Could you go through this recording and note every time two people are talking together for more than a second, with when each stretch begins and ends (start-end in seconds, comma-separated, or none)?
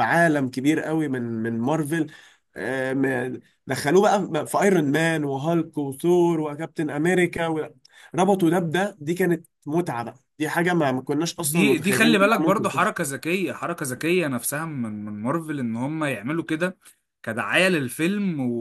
11.4-13.1